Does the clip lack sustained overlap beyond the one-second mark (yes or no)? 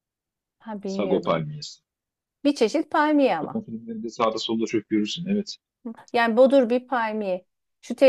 yes